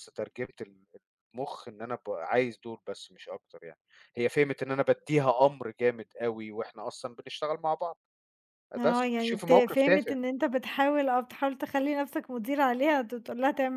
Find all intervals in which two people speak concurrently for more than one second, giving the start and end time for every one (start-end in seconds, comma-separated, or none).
8.8-10.2